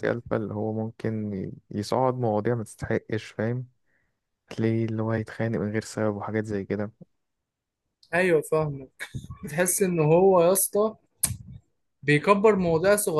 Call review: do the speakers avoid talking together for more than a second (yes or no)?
yes